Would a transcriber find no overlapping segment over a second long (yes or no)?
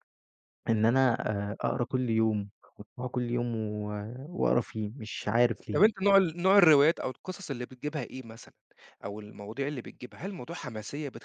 yes